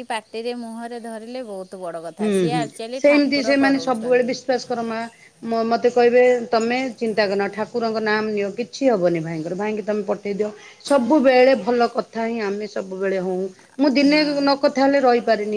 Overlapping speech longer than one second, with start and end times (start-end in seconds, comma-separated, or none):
2.2-4.3